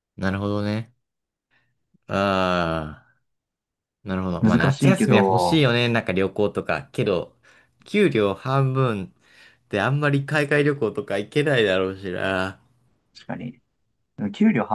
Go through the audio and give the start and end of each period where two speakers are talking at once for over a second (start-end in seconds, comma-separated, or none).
4.4-5.7